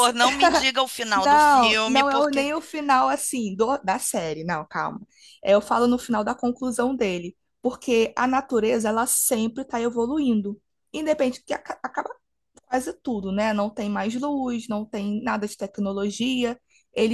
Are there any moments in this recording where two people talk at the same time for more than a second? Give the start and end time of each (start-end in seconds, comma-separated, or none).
1.1-2.5